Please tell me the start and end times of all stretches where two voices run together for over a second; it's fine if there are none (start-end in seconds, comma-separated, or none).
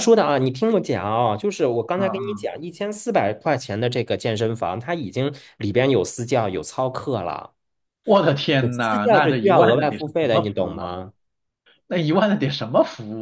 8.6-10.9